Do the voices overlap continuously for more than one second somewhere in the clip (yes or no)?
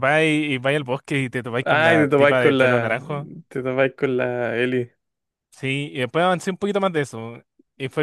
yes